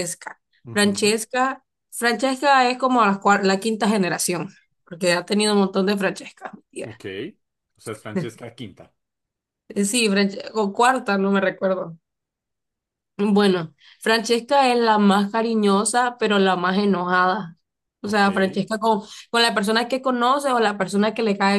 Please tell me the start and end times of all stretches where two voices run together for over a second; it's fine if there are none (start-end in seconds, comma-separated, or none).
none